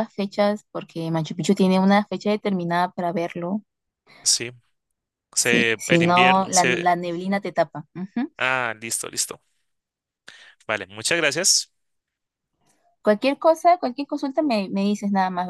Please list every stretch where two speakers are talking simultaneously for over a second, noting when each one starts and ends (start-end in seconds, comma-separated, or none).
5.3-6.9